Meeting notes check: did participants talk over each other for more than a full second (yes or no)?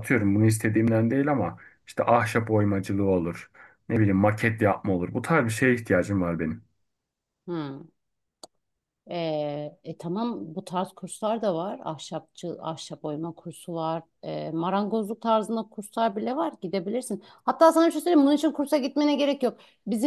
no